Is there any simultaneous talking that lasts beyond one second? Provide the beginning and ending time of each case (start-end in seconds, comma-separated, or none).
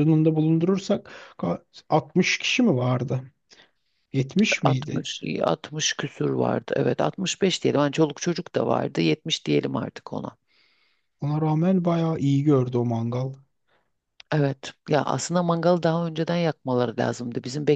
none